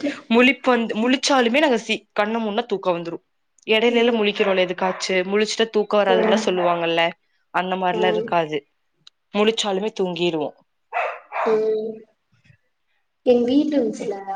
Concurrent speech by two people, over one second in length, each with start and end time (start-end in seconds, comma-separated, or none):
none